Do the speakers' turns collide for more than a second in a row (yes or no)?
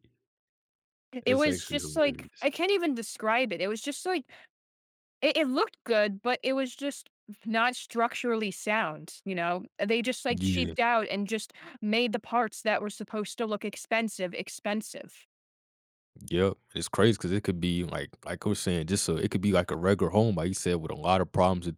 yes